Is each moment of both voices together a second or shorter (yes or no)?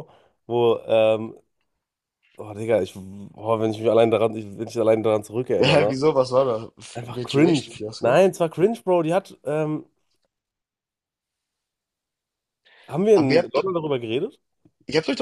no